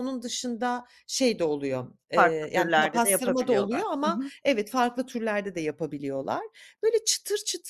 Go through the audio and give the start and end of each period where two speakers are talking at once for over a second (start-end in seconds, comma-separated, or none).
2.1-4.3